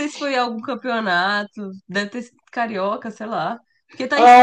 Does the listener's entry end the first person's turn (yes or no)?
yes